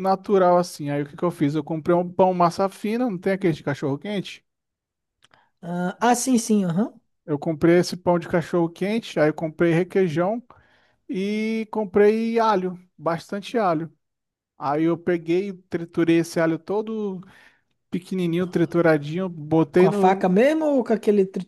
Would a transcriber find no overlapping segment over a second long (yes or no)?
yes